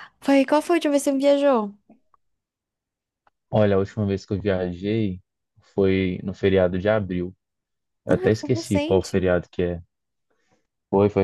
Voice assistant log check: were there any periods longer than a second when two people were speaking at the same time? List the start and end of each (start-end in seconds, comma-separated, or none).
8.1-9.3